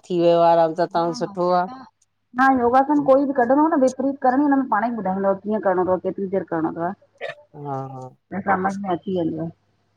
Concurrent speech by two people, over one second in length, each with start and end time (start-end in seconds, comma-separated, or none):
none